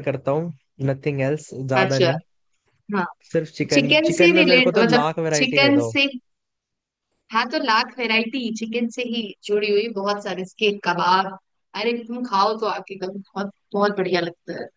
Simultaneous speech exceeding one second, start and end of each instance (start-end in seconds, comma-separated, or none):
3.7-5.9